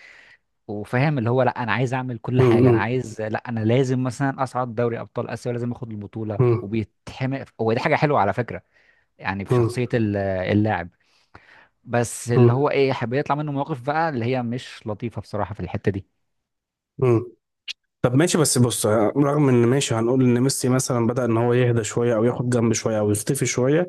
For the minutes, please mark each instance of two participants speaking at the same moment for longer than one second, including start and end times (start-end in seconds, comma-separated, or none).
none